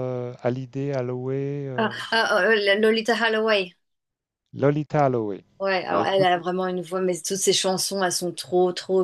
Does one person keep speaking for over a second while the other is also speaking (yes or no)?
no